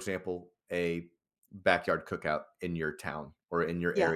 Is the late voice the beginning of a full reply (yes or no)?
no